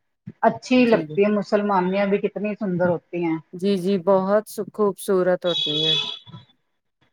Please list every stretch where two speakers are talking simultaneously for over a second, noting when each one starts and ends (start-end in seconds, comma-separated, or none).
none